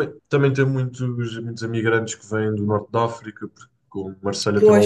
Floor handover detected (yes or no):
no